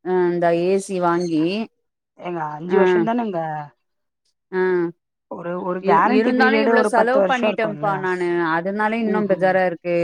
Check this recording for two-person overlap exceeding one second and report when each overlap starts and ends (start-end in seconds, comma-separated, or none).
5.9-7.9